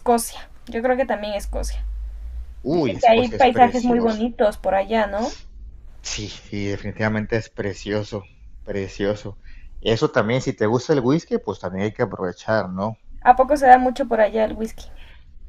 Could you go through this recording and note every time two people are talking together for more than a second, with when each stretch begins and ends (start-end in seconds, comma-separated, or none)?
2.7-4.3